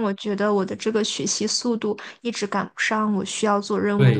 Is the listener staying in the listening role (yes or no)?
no